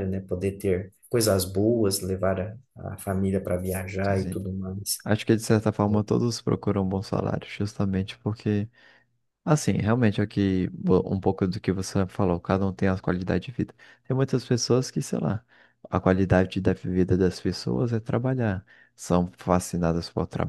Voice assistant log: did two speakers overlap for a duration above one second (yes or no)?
no